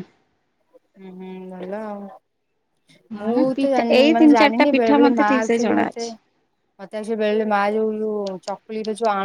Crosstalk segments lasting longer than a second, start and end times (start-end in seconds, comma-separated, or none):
3.2-6.1